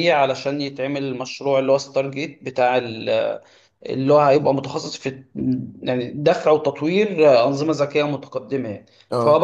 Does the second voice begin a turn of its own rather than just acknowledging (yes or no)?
no